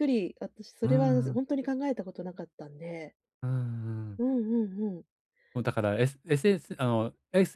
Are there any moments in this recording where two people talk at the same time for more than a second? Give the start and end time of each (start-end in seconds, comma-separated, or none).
none